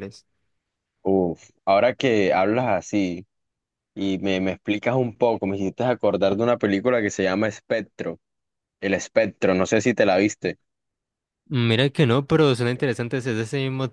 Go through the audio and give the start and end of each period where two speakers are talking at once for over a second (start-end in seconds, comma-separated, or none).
none